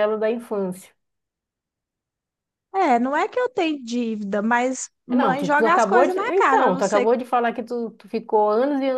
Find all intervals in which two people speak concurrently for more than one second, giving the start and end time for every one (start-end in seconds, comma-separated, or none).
5.1-7.1